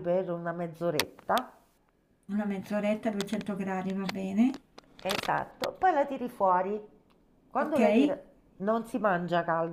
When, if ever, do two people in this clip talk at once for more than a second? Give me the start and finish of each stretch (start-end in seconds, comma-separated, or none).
none